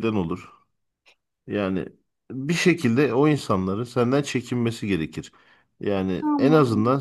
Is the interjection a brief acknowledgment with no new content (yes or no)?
yes